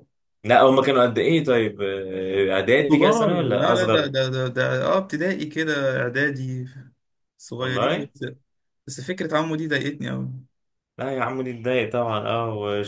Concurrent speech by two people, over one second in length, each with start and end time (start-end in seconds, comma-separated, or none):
2.9-4.1